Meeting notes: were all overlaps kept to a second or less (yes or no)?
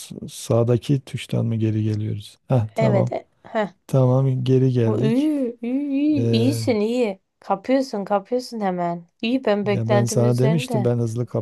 no